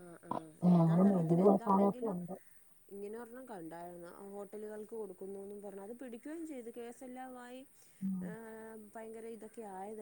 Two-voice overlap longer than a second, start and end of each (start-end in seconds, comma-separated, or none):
0.8-2.1